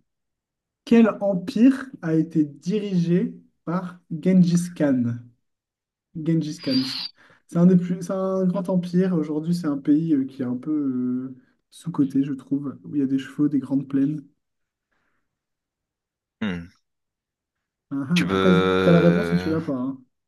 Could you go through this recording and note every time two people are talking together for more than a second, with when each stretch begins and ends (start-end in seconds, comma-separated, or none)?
18.1-19.5